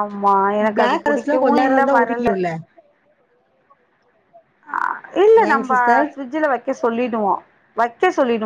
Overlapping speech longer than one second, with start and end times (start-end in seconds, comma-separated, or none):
0.8-2.3